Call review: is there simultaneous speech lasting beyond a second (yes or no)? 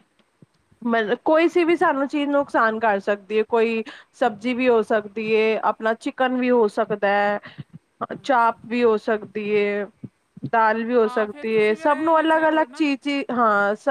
yes